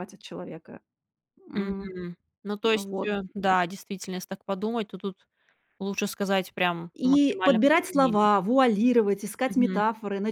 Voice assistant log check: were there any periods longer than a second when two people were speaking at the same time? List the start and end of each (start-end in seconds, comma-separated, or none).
7.0-8.3